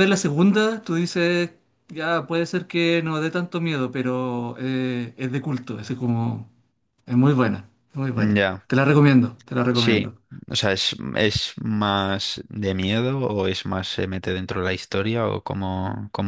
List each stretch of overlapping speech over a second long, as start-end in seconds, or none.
none